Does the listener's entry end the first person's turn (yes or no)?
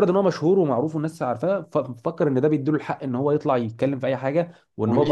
yes